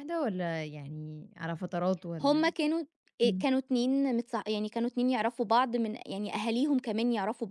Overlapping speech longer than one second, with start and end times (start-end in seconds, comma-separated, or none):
none